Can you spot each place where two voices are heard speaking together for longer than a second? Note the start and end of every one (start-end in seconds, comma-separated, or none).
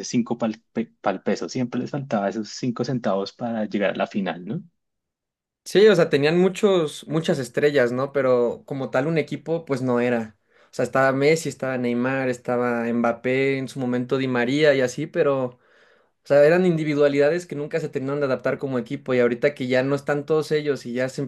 none